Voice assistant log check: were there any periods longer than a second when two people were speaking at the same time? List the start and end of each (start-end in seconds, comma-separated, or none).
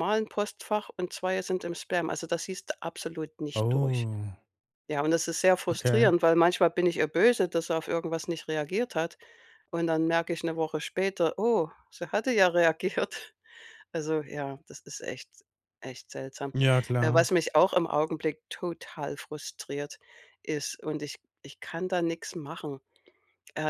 none